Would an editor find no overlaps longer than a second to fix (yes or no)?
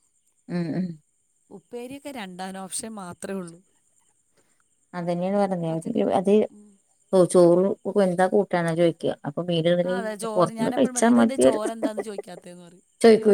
yes